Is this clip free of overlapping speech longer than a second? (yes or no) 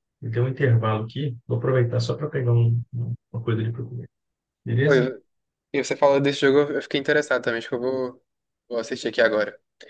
yes